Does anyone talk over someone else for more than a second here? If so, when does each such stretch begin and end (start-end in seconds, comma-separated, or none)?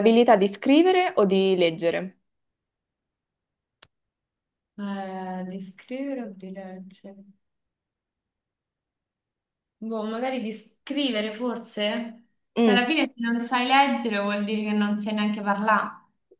none